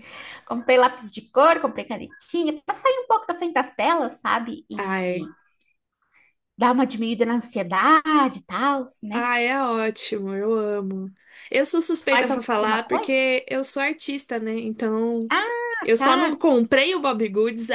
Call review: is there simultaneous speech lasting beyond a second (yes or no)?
yes